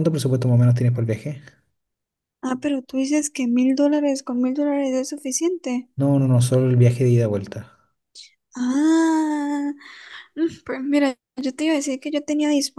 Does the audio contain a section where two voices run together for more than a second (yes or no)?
no